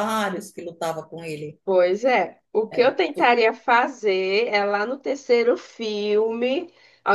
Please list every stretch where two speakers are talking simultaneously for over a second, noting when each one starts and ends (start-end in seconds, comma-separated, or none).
none